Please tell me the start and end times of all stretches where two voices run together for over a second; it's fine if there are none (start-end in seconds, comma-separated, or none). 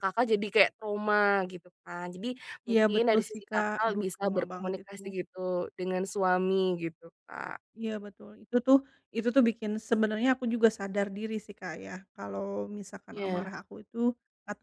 2.7-5.0